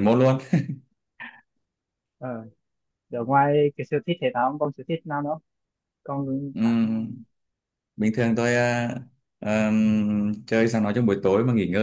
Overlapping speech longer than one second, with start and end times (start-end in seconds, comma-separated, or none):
none